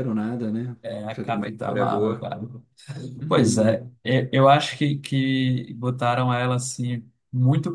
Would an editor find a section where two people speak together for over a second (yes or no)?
yes